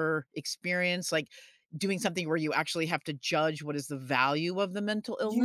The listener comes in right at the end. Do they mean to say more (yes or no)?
yes